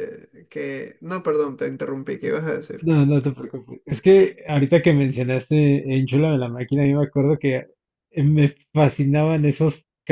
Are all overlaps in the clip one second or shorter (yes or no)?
yes